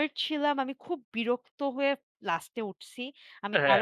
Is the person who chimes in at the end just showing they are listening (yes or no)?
yes